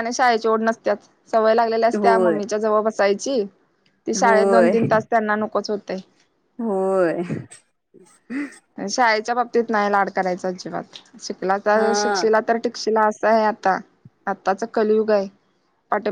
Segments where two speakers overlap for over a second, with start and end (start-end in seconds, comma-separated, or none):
none